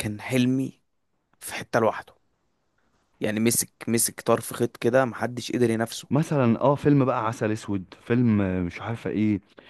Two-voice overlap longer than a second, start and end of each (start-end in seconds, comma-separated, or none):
none